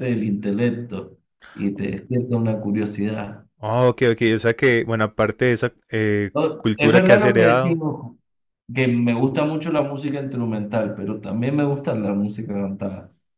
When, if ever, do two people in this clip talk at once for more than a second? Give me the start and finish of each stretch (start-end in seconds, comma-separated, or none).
6.3-7.8